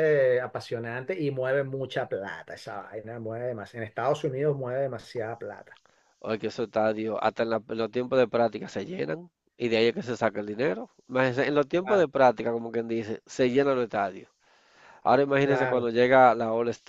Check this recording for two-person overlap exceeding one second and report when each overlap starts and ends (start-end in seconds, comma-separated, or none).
none